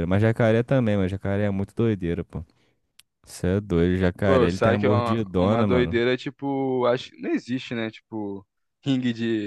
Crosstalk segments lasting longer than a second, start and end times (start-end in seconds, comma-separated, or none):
4.2-6.0